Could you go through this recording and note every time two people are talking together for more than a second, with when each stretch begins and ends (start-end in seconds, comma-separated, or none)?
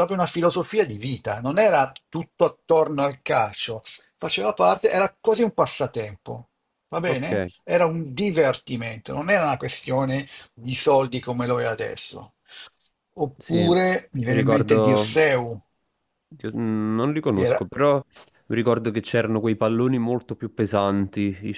13.4-15.3